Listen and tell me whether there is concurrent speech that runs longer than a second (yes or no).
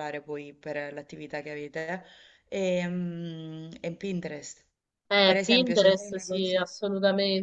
yes